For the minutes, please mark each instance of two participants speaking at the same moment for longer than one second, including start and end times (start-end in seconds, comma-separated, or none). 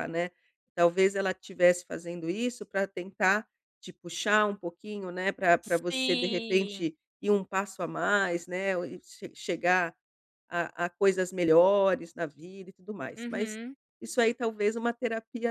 5.6-6.9